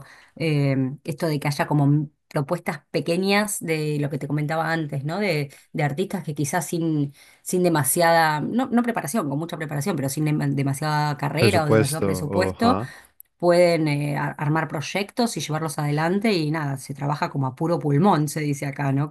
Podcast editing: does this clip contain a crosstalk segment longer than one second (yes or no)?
yes